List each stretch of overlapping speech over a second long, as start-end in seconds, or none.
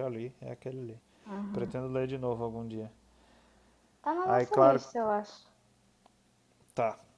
none